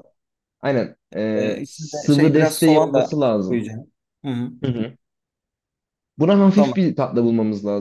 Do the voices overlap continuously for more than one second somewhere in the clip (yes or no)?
yes